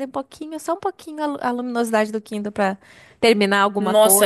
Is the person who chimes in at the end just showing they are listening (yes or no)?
no